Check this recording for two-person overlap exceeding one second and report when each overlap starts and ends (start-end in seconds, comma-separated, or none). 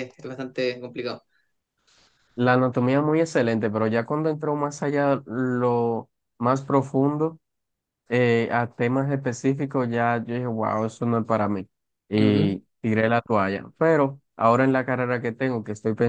none